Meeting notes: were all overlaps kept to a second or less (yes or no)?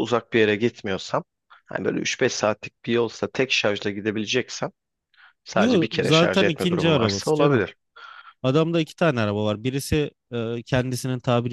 no